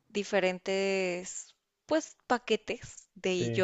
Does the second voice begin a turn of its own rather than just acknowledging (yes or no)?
no